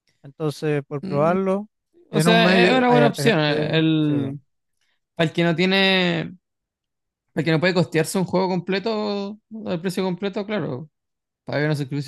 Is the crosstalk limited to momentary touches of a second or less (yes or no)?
no